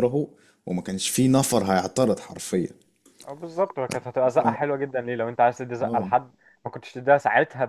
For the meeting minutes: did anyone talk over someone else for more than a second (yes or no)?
no